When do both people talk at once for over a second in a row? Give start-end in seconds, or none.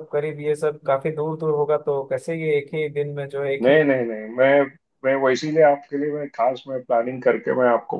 none